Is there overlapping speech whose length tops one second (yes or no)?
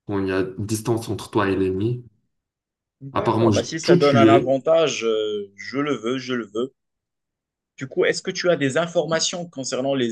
yes